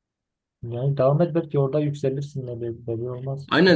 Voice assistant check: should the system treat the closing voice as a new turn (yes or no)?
yes